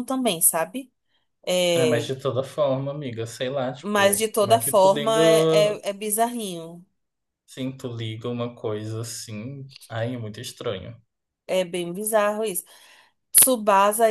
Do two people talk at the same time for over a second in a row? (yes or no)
yes